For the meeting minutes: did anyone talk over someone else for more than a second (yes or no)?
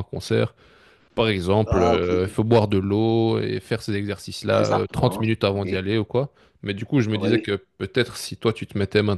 yes